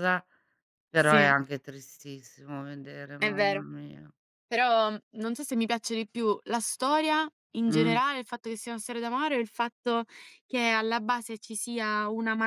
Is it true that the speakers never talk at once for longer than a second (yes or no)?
yes